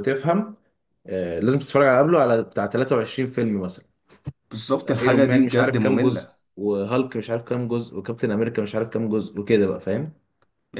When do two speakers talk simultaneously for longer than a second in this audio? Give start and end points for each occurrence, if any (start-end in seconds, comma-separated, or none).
4.9-6.3